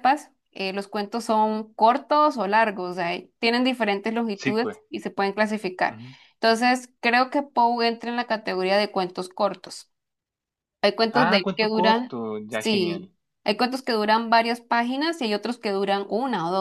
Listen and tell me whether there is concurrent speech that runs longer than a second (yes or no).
yes